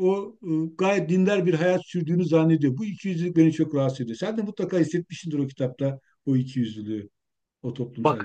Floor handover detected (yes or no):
yes